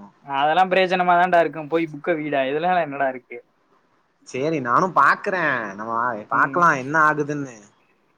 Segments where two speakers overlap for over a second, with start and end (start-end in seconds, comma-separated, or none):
none